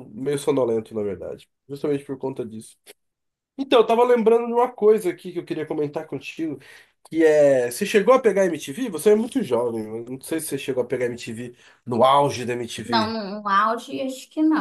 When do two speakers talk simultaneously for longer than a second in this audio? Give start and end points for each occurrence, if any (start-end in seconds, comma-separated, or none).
none